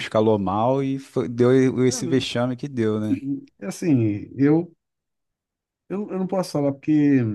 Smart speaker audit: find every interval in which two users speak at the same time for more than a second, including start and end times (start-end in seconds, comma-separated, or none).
none